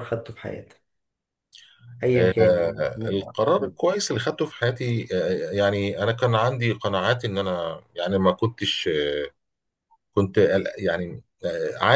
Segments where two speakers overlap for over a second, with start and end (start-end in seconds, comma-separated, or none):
2.2-3.7